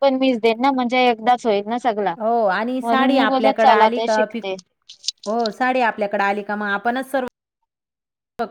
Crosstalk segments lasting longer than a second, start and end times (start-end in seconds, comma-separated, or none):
2.8-4.5